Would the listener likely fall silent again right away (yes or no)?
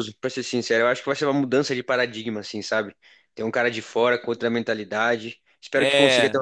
yes